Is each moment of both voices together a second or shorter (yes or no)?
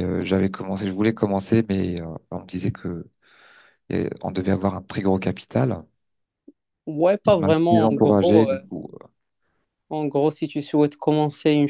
no